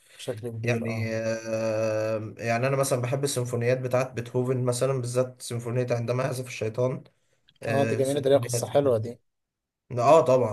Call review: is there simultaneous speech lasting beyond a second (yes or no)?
yes